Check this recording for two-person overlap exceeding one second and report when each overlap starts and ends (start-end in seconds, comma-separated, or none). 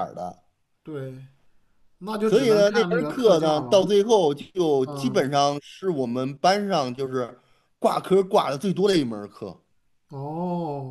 2.2-3.9